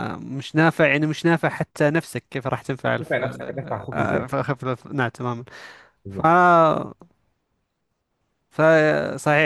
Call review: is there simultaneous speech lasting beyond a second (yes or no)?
no